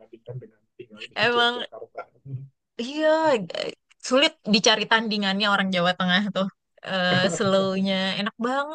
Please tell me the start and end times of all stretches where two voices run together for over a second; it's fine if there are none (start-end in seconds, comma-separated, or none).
none